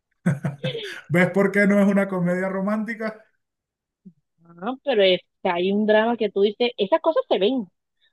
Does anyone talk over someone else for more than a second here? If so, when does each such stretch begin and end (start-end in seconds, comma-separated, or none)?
none